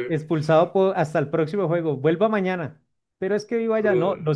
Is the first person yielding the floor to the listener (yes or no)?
no